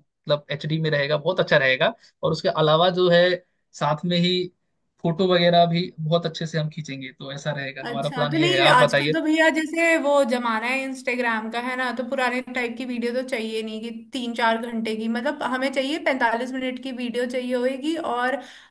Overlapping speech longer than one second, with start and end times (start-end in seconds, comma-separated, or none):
7.9-9.2